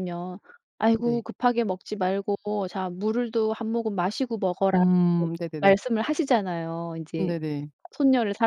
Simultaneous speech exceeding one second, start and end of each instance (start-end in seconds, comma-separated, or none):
none